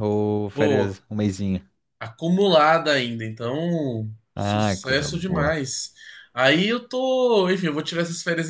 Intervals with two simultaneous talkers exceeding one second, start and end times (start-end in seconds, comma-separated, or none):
4.3-5.5